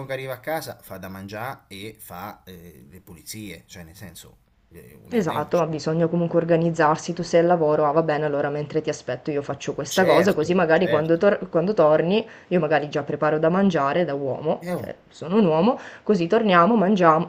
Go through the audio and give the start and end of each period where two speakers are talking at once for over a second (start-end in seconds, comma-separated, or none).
9.9-11.2